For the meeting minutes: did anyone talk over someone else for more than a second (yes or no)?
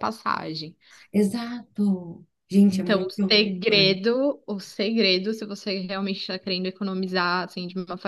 yes